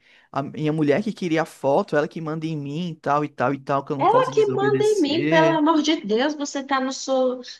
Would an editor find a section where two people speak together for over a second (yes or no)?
yes